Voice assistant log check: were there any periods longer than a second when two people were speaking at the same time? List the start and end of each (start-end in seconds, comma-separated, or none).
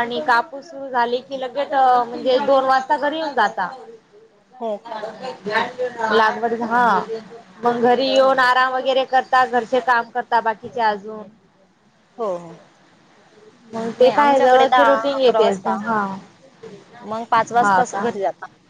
14.0-15.8